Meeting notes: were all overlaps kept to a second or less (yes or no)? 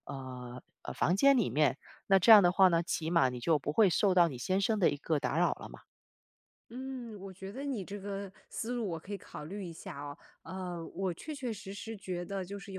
yes